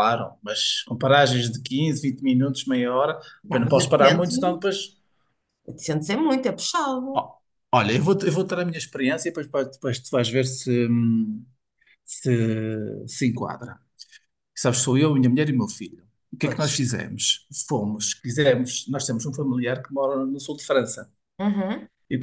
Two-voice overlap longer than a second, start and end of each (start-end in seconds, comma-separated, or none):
3.5-4.8